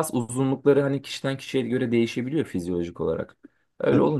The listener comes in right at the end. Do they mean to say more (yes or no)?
no